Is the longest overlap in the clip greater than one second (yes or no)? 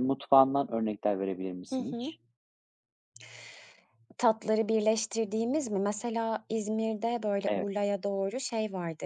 no